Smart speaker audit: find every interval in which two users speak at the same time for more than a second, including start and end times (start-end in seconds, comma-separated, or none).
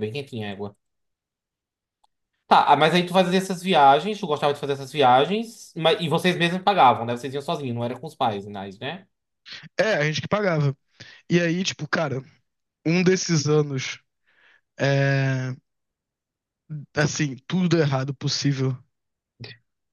none